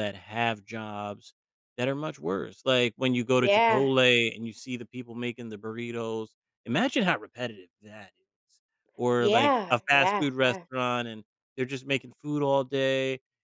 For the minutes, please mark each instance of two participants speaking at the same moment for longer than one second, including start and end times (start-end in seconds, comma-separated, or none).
9.2-10.7